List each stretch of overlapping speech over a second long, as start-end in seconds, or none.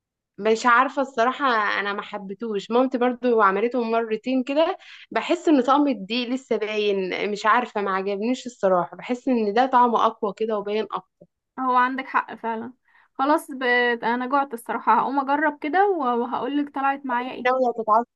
none